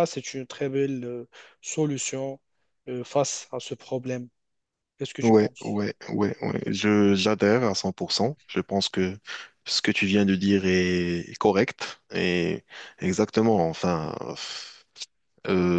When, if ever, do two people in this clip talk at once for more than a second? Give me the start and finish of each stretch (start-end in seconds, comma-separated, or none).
none